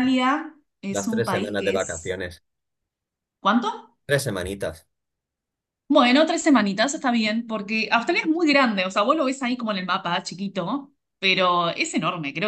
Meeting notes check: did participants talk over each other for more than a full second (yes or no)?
yes